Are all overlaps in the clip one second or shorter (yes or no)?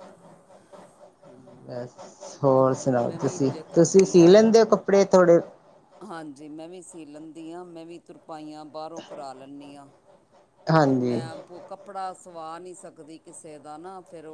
no